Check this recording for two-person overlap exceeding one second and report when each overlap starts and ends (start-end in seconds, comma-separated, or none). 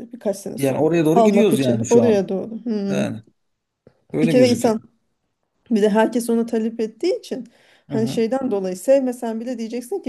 0.6-2.3